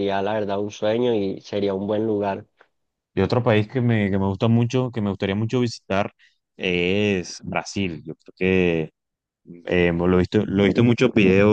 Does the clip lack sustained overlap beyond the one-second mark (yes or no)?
yes